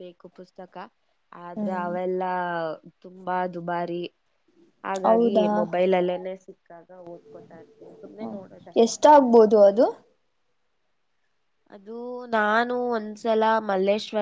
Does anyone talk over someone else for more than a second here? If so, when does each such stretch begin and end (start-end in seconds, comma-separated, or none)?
none